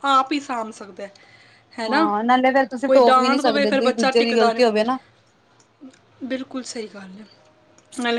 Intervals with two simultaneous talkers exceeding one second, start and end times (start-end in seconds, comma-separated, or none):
2.9-4.8